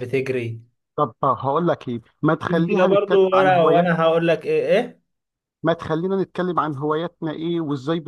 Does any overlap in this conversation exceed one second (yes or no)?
yes